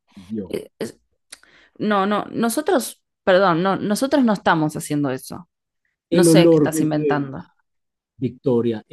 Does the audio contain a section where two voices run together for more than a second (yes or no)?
yes